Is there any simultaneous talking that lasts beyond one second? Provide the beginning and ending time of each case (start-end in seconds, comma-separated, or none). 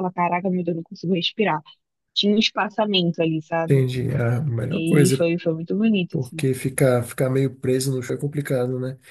none